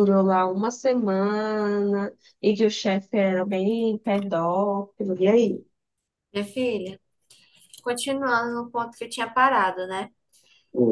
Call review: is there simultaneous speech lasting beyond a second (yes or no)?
no